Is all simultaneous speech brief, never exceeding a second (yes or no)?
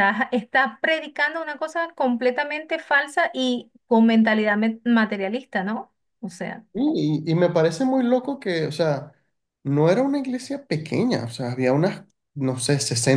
yes